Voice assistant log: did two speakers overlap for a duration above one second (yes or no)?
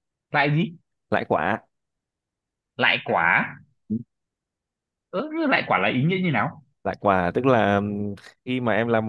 no